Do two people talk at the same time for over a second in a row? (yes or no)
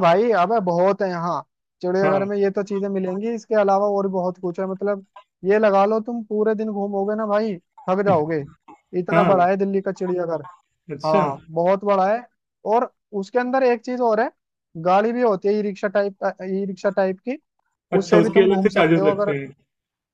yes